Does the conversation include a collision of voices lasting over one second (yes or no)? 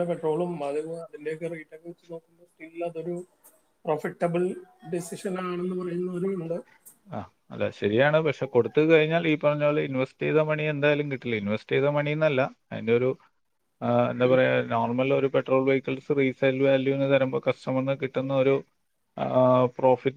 no